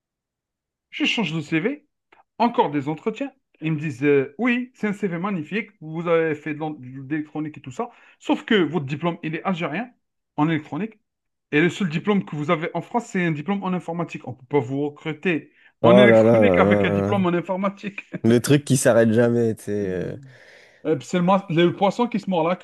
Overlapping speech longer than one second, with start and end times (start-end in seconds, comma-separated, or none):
15.8-17.2